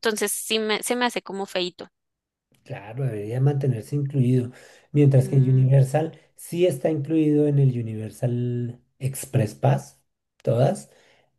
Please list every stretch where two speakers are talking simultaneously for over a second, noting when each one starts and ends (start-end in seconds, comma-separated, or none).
none